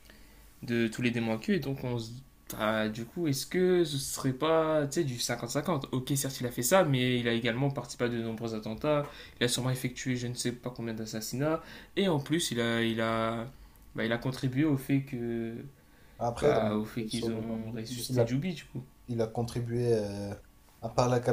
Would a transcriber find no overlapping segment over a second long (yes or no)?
no